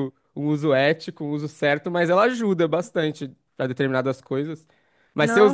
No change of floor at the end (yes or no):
yes